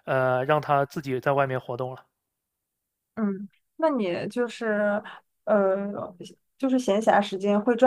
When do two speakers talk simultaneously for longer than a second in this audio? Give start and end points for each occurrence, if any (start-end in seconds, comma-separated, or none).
none